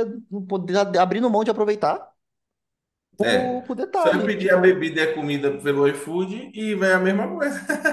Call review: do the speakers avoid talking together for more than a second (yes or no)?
no